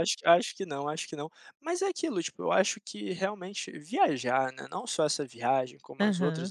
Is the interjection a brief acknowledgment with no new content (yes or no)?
yes